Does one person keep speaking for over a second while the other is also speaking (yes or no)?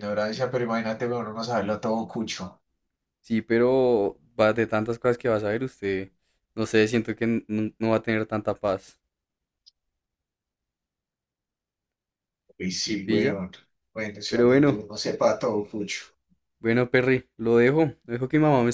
no